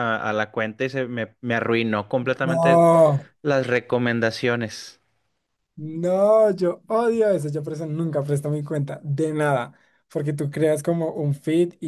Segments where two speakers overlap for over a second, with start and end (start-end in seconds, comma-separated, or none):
none